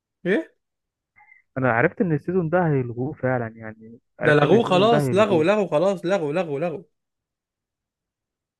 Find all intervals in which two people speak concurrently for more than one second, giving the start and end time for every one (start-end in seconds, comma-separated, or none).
4.2-5.5